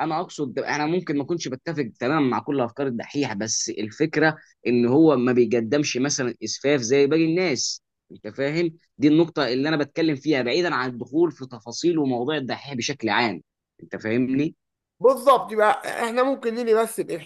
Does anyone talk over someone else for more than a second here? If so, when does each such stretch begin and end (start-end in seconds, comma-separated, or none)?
none